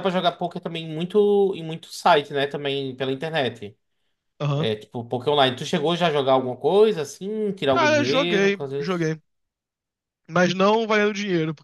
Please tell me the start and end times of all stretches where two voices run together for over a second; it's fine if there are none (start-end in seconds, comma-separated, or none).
7.7-9.2